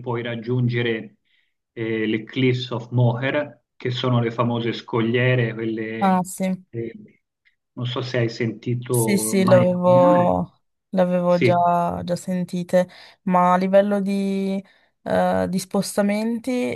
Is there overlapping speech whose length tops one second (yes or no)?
yes